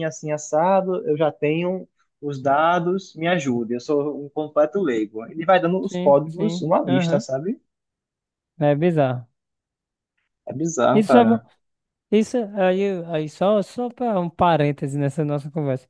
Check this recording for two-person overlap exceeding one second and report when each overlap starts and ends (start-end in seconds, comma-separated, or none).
5.8-7.2